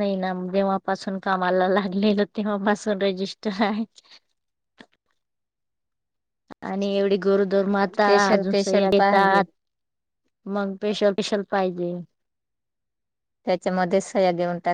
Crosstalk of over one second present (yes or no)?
yes